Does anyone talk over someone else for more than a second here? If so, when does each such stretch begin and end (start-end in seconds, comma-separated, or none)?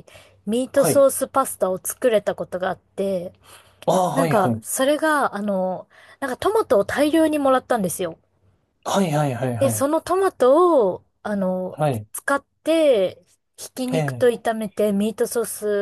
none